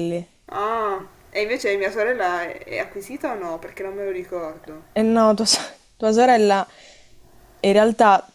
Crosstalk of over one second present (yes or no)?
no